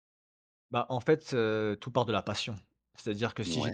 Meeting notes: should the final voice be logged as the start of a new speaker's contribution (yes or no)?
no